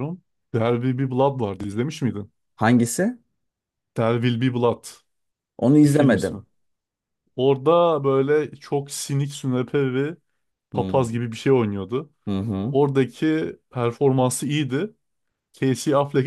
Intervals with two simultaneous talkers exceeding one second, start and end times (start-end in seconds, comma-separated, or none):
none